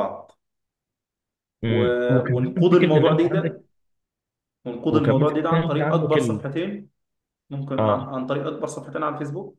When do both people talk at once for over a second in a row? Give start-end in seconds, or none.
1.7-3.6, 4.9-6.4